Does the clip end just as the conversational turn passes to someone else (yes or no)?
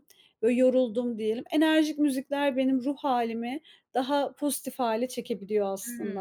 yes